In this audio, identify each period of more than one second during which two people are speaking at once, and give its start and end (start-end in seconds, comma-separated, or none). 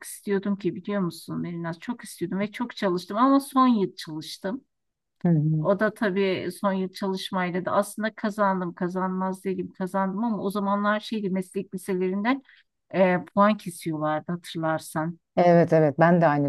none